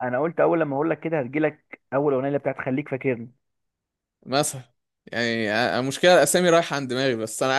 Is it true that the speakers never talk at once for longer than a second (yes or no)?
yes